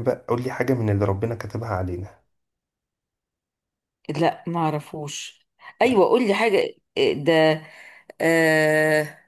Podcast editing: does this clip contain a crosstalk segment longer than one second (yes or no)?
no